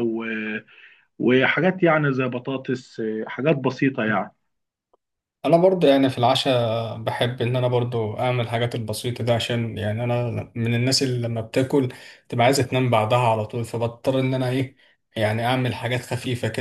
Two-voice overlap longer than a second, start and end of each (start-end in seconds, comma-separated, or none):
none